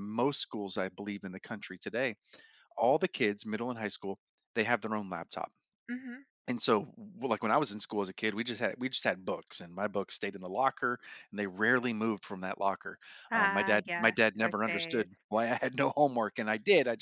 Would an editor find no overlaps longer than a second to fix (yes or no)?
no